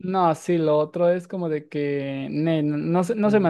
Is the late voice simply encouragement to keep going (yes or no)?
no